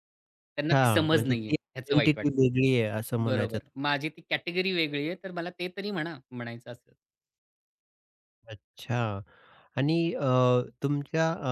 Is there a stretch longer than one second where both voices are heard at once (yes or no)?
yes